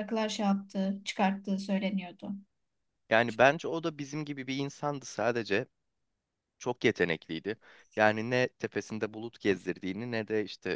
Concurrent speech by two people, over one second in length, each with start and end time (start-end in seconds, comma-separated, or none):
none